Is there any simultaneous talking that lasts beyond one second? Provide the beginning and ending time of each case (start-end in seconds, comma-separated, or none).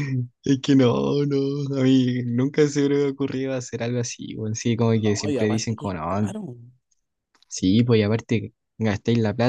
4.9-6.3